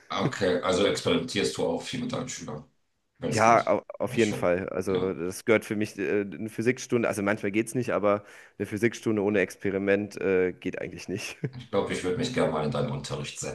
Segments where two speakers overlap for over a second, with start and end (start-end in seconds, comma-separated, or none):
3.3-5.2